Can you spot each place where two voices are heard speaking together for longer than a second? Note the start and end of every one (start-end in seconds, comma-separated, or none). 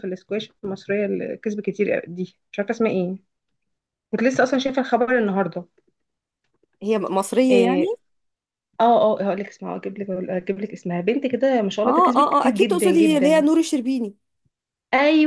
11.8-13.4